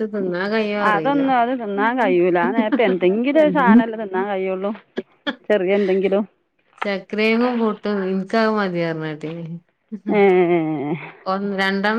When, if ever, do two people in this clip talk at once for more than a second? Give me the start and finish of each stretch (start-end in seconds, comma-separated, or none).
none